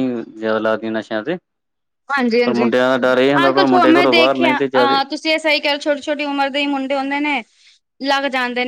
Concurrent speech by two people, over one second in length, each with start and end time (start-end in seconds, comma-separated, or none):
3.5-5.0